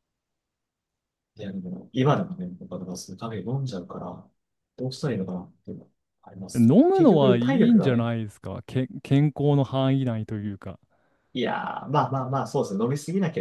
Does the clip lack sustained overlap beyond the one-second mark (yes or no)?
no